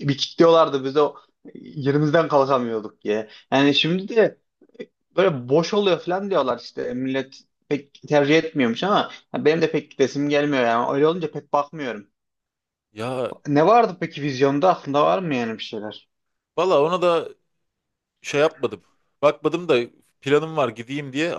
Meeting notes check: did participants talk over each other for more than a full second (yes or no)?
no